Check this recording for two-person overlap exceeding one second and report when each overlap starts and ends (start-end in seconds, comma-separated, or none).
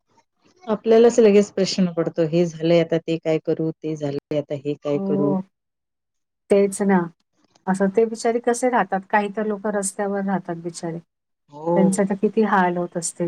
none